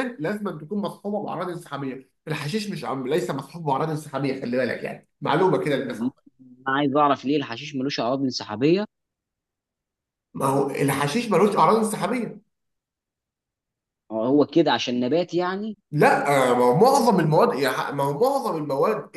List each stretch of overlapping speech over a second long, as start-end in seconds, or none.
none